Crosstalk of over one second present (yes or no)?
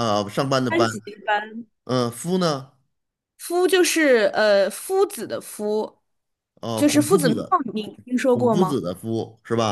yes